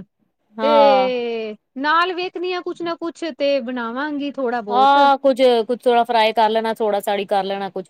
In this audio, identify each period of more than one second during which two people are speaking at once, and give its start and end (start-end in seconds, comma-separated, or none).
none